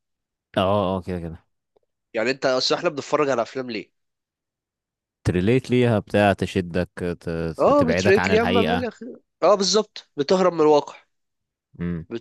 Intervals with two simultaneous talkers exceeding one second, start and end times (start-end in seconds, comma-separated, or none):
7.6-8.9